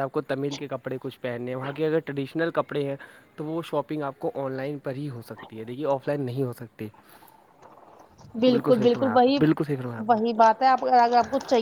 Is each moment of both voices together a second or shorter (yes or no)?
yes